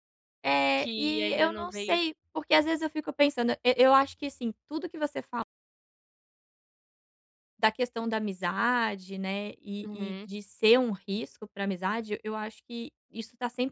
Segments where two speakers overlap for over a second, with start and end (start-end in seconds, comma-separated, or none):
0.8-2.0